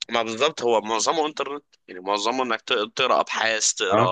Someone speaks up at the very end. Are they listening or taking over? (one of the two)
listening